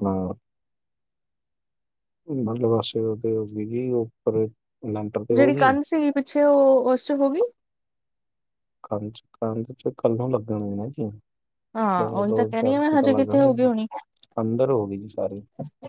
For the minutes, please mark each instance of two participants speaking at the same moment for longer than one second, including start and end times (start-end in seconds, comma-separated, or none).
12.0-13.6